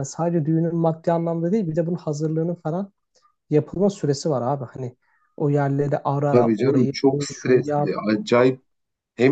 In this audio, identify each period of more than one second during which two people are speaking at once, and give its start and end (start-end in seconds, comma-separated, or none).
6.3-8.0